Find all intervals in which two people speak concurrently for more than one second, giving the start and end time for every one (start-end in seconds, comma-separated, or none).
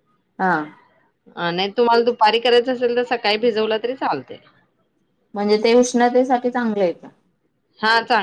none